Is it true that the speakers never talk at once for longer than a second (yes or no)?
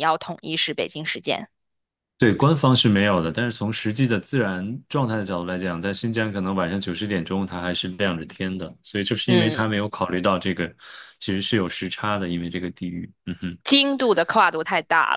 yes